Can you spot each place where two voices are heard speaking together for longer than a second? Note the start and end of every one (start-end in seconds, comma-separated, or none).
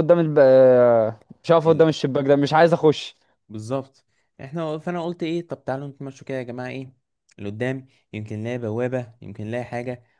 none